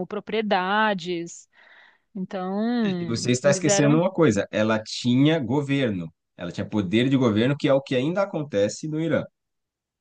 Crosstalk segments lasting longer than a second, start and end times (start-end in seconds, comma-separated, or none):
2.8-4.0